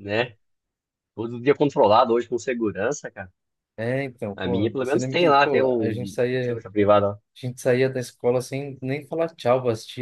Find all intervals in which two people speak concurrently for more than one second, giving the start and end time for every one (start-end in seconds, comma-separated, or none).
4.3-6.5